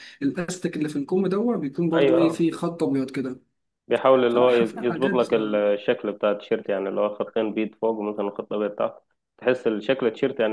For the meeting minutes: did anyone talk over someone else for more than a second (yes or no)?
yes